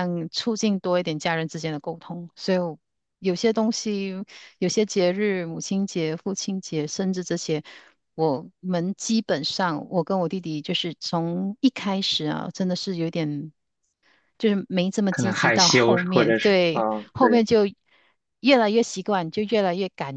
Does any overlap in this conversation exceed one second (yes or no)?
yes